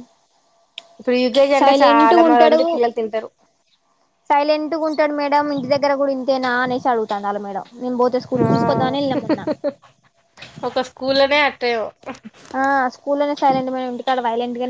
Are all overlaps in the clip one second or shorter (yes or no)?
yes